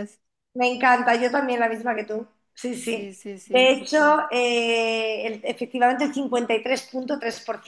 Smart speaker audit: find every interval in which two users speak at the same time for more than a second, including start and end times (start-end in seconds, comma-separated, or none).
2.7-4.2